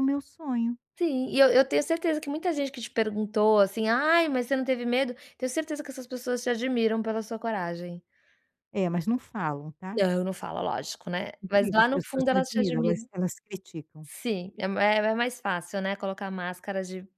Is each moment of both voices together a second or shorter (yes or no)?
no